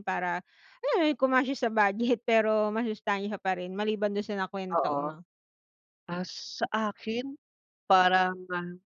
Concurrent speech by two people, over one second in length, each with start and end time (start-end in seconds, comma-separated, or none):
none